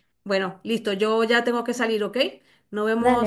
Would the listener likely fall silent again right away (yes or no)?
yes